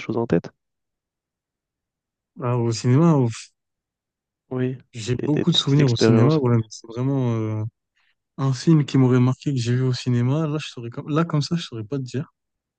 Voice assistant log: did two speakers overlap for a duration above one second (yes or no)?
yes